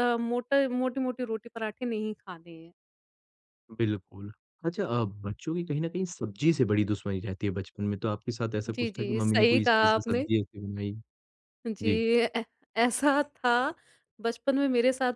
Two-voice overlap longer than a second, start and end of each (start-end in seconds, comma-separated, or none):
8.7-10.3